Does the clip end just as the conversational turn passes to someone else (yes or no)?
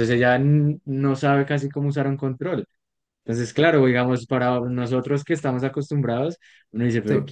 no